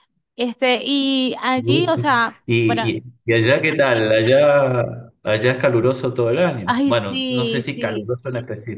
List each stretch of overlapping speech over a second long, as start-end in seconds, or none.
6.7-8.1